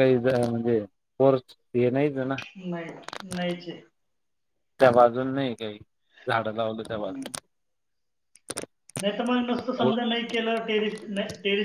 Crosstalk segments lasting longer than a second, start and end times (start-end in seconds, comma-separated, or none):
none